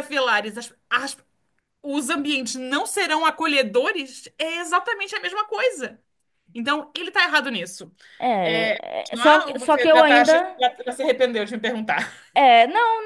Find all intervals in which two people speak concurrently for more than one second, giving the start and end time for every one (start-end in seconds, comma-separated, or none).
8.4-10.3